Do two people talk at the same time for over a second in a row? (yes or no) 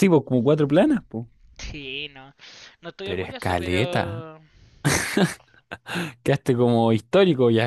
yes